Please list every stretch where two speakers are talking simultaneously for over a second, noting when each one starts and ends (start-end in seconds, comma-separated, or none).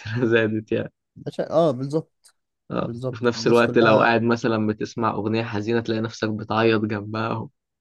2.8-4.1